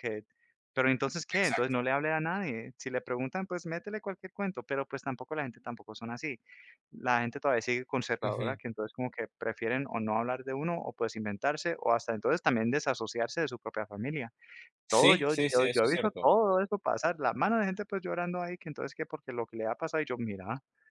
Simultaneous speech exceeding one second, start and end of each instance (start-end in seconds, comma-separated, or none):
14.9-16.3